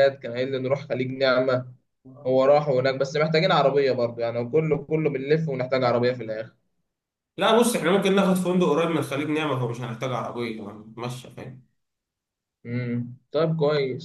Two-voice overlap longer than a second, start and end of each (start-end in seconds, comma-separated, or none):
none